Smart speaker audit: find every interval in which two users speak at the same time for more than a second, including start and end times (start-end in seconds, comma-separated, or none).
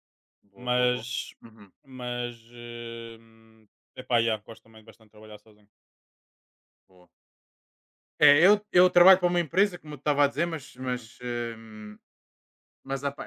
none